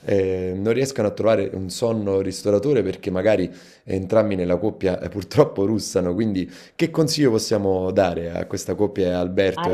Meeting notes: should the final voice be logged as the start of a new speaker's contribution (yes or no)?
yes